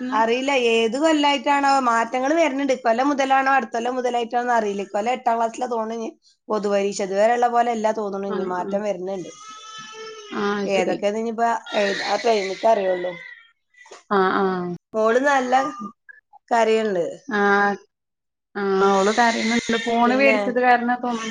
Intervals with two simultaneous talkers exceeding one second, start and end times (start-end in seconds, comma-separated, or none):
none